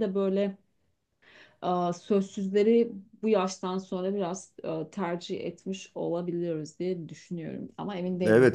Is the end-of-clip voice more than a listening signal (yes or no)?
yes